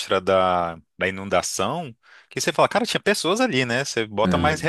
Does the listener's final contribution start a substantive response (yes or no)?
no